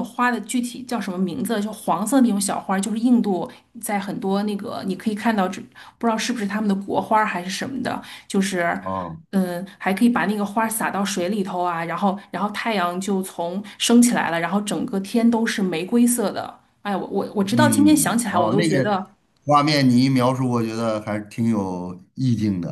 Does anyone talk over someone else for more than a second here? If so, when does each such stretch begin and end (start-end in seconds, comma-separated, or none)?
17.6-18.9